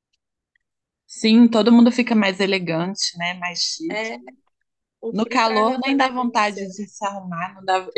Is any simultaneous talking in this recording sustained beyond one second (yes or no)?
yes